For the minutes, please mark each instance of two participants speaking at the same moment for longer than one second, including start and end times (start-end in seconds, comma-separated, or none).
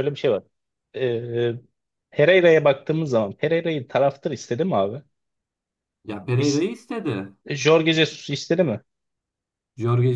none